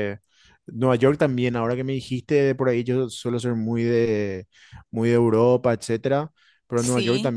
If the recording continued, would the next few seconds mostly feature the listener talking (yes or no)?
no